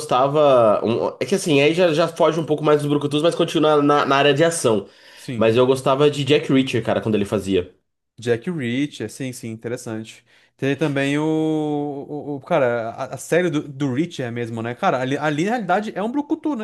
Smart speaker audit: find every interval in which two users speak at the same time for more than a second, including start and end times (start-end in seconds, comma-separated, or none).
none